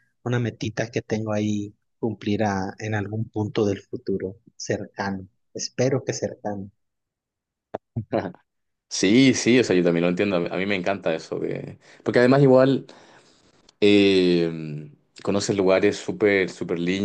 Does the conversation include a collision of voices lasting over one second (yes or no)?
no